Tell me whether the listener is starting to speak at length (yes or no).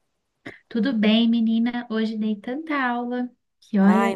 yes